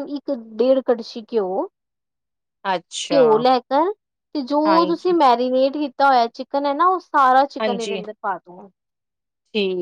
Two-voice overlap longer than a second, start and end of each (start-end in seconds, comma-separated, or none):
none